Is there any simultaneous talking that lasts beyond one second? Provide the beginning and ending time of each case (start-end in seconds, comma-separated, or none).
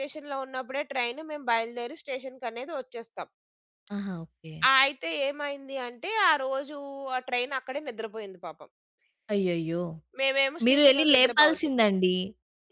10.7-11.9